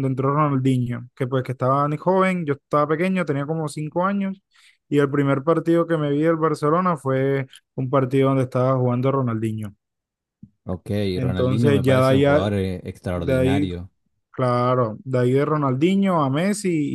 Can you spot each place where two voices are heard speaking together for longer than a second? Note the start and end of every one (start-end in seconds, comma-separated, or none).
11.2-12.5